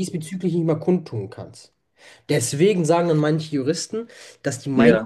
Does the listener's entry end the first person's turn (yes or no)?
no